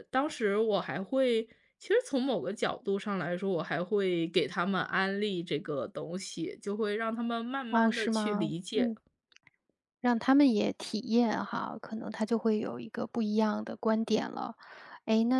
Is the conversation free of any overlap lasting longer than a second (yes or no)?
no